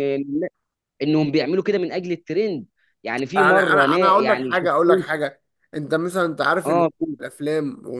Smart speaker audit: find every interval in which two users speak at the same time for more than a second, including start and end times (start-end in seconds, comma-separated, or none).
3.4-5.0